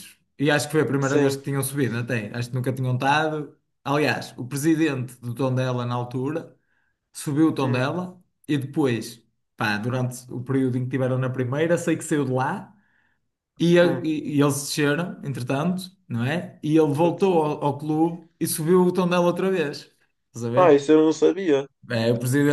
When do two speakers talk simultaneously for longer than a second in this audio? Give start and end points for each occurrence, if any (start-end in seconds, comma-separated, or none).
none